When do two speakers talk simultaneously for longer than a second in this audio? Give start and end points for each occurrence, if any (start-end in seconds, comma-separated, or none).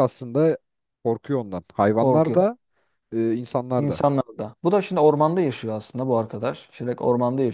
none